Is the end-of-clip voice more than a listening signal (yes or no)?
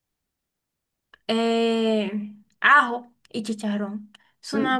yes